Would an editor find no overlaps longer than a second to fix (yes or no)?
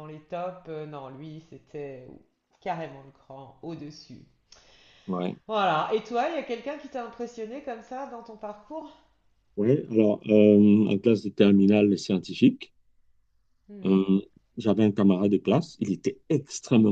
yes